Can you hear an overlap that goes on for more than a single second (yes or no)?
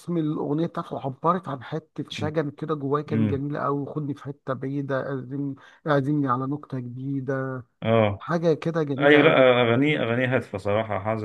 no